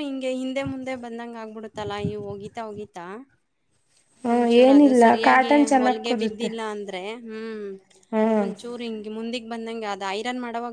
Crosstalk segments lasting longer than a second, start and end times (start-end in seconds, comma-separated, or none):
4.3-6.5